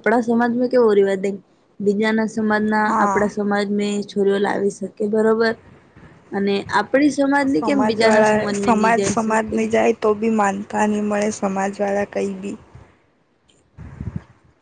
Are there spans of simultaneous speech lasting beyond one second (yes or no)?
yes